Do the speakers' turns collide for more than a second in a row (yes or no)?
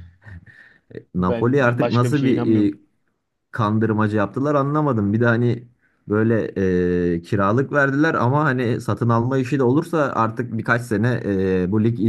yes